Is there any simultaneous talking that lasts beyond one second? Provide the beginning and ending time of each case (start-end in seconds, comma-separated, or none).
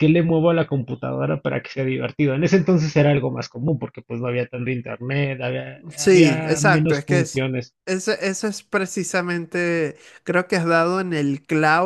6.0-7.4